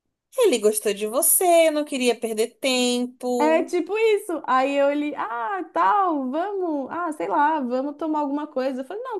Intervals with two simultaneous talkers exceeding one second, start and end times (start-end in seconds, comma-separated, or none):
none